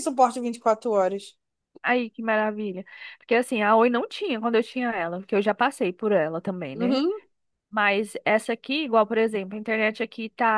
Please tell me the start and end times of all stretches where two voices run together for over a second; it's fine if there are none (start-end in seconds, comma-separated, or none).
none